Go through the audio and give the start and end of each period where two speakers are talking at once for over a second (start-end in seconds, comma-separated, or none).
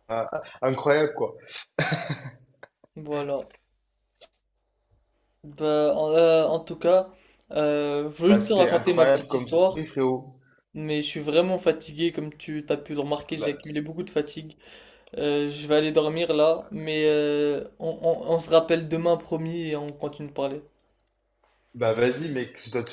8.3-9.8